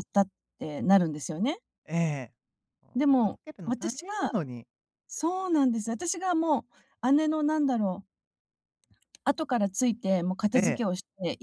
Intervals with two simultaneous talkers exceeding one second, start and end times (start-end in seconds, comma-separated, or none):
3.0-4.3